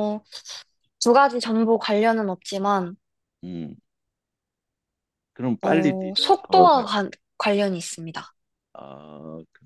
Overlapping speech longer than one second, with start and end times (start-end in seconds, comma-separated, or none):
5.6-6.9